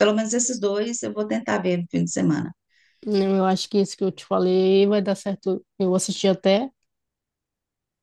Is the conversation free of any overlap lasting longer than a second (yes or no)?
yes